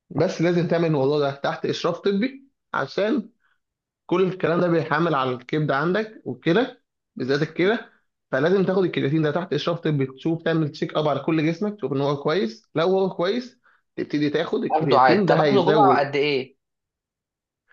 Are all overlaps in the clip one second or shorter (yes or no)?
no